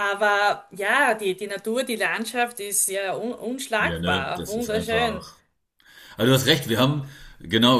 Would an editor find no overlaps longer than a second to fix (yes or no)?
no